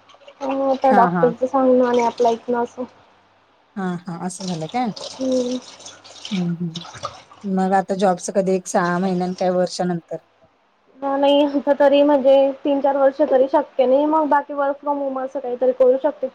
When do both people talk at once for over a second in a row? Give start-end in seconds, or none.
none